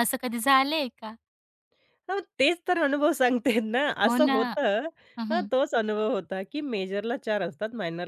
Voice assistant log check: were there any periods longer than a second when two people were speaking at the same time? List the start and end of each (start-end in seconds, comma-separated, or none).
none